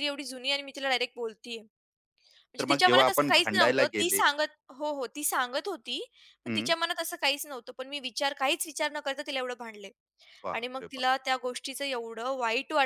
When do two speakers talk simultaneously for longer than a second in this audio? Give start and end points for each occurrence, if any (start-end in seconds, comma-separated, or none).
2.6-4.2